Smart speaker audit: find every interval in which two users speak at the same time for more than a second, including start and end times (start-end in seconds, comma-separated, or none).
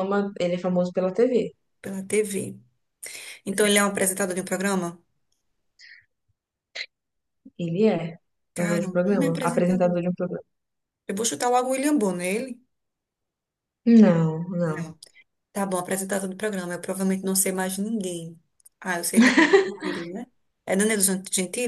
8.5-10.0